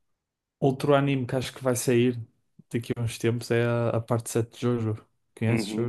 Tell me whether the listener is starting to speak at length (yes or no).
yes